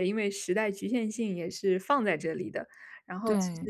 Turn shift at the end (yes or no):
no